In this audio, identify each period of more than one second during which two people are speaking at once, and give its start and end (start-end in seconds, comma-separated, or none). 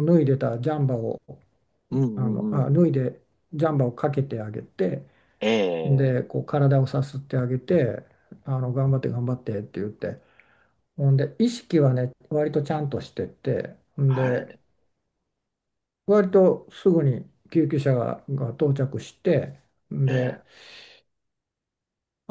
none